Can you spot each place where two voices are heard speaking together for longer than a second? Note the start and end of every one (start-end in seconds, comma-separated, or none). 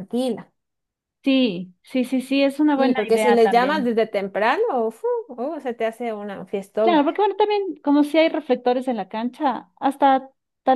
2.8-4.0